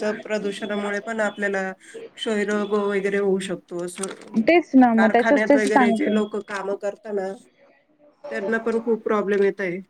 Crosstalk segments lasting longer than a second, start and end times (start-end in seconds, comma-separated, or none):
5.0-6.2